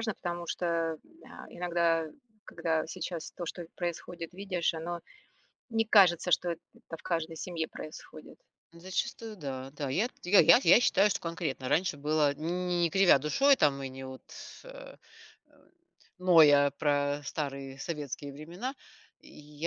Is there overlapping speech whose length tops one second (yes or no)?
no